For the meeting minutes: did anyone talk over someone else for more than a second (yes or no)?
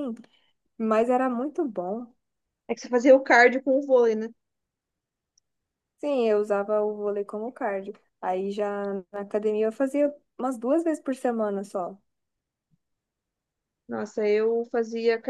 no